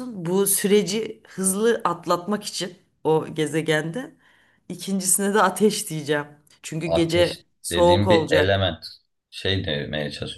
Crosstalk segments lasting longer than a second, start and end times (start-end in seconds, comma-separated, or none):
6.8-8.7